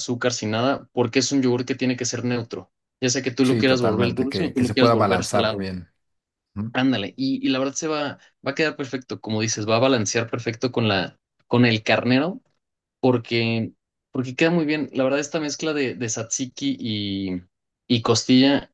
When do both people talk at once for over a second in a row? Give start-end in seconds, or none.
3.4-5.7